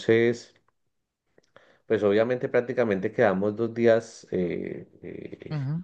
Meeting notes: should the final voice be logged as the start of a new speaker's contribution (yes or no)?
no